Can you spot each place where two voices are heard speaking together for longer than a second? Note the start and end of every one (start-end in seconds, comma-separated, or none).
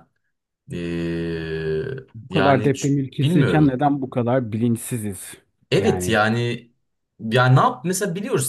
2.3-3.8